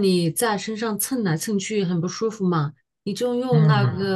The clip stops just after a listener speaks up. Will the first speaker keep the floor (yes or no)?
yes